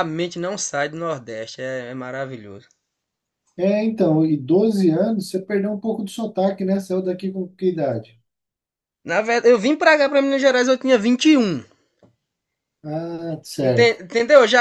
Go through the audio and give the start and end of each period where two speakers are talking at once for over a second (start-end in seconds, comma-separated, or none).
none